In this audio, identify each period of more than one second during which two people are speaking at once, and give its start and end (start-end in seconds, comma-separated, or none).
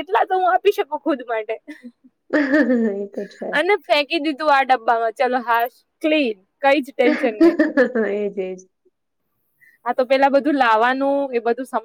none